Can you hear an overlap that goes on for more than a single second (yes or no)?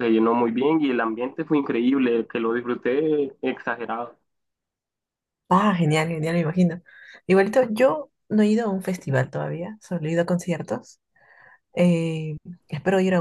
no